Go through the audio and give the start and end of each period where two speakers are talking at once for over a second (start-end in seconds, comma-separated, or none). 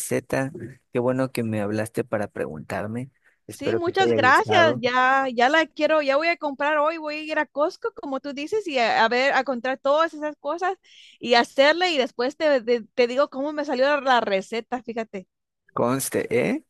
3.5-4.8